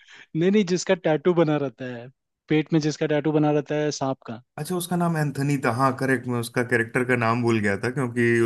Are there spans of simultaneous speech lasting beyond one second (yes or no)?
no